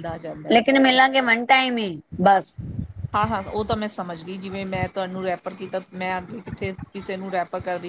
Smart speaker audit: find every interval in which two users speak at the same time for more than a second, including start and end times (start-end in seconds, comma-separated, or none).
none